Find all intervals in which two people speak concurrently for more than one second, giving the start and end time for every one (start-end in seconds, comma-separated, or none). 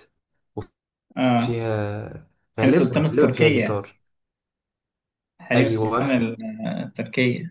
2.6-3.8